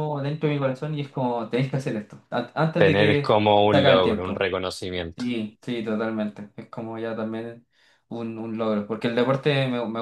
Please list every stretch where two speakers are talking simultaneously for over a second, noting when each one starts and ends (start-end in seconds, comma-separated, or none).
2.8-4.5